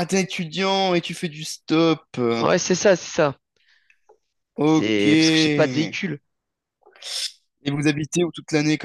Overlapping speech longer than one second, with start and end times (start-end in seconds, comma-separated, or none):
4.7-6.0